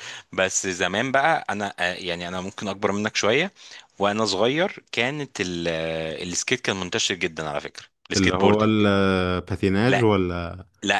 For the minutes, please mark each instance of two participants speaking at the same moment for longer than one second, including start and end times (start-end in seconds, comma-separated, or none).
none